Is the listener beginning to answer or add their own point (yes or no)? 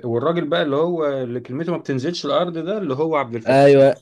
yes